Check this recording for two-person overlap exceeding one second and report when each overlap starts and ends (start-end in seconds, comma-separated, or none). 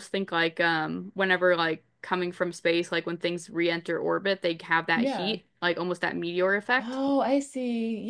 none